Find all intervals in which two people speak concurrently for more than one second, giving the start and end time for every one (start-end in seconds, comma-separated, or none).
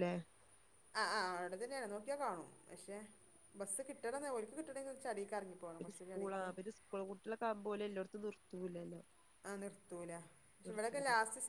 none